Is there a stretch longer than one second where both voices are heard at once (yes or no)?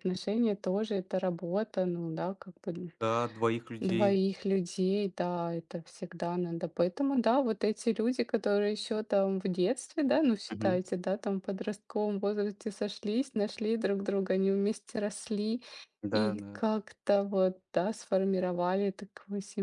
no